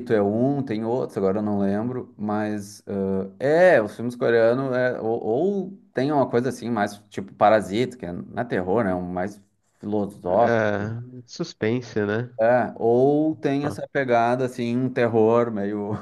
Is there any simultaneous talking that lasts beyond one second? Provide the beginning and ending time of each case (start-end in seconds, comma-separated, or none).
none